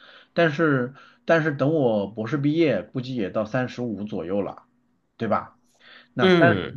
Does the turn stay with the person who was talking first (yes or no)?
yes